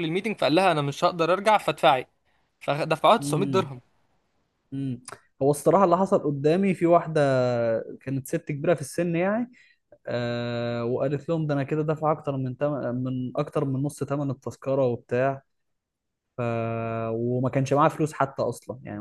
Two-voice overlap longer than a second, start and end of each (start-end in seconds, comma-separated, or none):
none